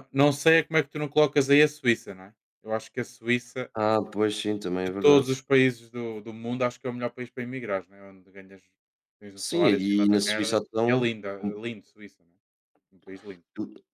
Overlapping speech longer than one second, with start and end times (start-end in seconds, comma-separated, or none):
9.3-11.6